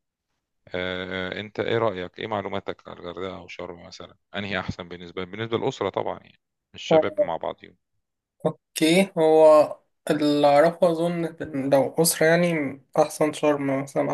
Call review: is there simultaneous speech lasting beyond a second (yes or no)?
no